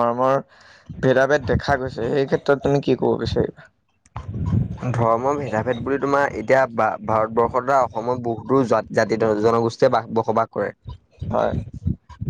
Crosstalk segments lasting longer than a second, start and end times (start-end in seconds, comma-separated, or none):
none